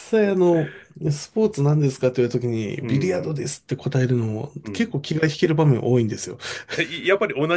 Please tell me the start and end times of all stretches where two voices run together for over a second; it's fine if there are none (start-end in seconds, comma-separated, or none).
none